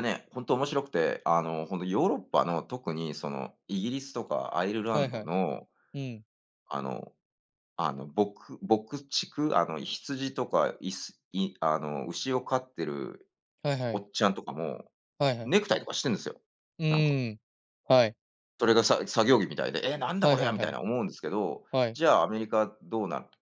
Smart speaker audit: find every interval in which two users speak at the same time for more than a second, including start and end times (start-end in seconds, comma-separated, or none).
none